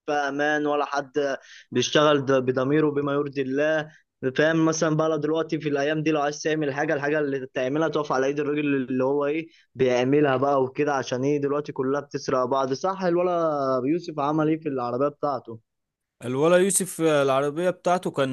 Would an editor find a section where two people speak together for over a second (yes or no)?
no